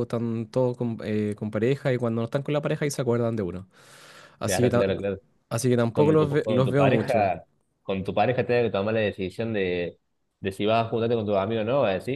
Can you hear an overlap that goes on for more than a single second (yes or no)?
yes